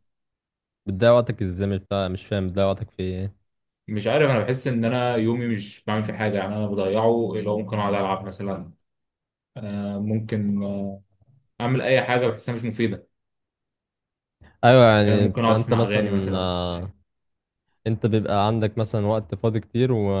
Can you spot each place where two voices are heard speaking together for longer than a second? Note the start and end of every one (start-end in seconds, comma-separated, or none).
15.1-16.5